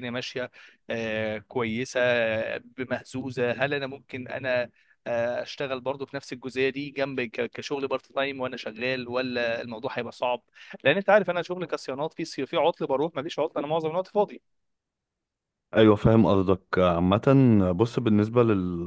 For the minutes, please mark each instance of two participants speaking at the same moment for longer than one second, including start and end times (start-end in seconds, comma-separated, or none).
none